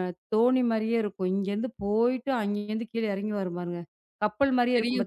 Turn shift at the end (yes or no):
yes